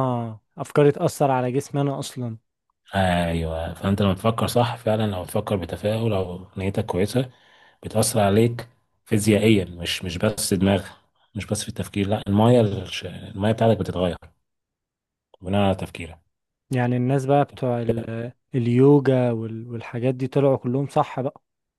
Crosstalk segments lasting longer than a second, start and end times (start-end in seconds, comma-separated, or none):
none